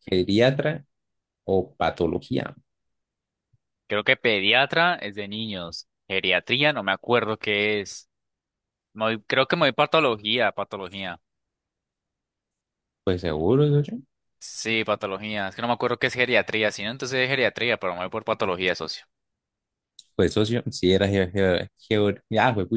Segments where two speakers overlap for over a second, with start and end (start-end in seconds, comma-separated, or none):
none